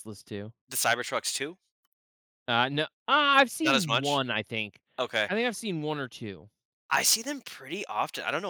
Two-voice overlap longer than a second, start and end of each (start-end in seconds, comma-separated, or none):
none